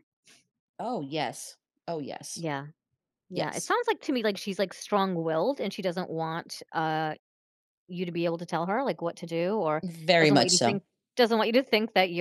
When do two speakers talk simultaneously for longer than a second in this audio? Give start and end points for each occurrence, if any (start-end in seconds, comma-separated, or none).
none